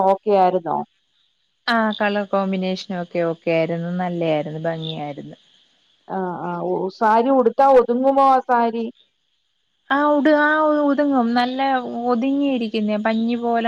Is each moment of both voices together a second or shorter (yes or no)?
yes